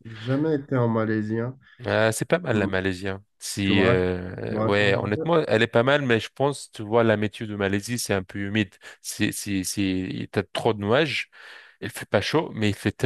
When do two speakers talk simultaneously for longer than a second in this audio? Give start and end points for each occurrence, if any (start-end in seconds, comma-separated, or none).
3.6-5.3